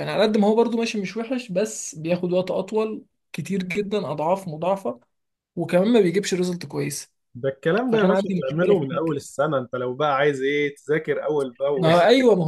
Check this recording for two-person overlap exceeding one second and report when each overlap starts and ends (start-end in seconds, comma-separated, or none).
7.8-9.2